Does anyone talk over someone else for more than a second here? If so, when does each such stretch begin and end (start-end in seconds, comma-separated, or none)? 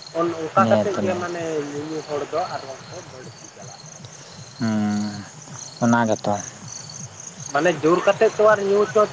none